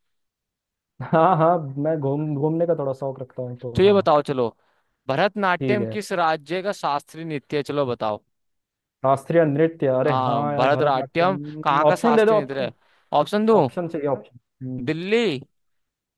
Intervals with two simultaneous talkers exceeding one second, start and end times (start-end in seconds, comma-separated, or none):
10.0-12.7